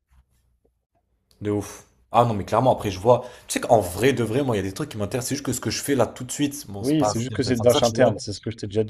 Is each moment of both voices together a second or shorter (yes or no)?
no